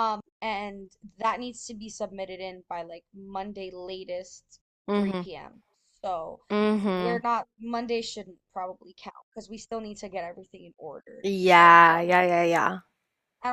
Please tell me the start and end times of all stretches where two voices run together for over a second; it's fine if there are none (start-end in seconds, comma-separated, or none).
11.2-12.5